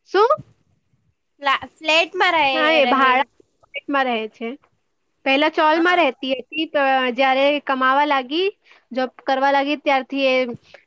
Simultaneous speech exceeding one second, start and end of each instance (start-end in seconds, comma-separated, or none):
none